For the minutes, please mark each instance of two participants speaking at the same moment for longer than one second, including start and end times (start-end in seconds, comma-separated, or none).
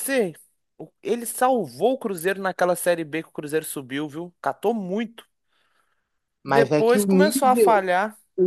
6.5-7.8